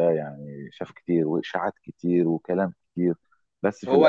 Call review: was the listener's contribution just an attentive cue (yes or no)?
no